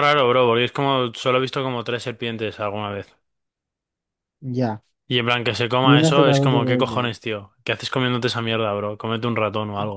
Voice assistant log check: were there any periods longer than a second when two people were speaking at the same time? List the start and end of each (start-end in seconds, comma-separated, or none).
5.8-7.1